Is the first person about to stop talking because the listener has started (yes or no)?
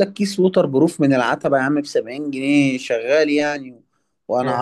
no